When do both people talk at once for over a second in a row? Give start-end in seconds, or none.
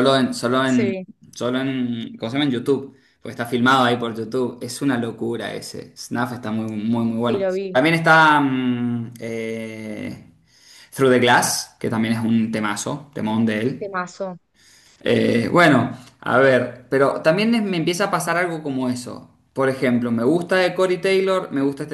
none